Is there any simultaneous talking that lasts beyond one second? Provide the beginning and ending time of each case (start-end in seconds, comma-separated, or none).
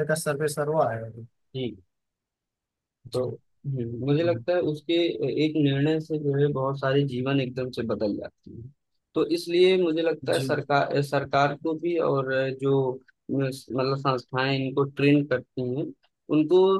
none